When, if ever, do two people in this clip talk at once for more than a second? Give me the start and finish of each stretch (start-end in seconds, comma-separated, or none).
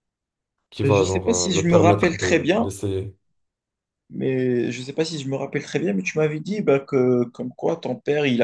0.8-2.7